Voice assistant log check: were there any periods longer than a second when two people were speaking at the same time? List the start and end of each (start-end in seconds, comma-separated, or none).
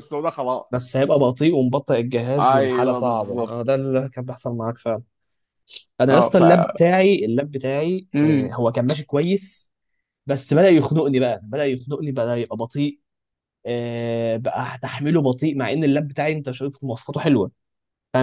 2.4-3.8